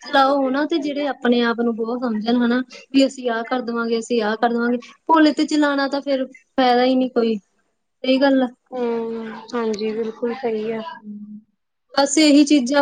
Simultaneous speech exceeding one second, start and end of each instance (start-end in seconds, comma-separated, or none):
none